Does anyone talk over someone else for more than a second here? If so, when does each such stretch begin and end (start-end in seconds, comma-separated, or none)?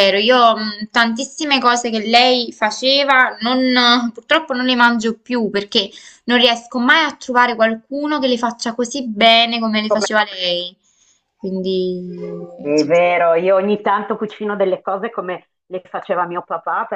none